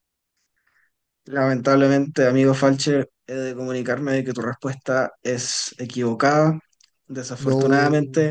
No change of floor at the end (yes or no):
yes